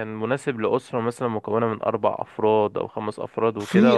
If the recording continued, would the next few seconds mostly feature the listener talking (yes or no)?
yes